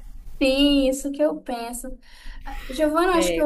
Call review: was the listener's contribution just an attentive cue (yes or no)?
yes